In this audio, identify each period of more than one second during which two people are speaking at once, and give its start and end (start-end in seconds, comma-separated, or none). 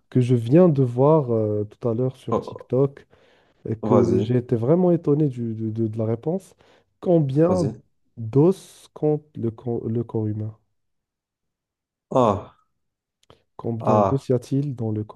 none